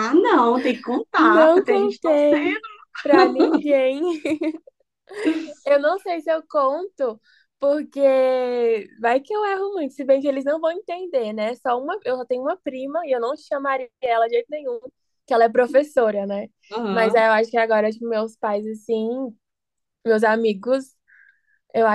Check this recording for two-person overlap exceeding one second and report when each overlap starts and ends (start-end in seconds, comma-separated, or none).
1.2-2.6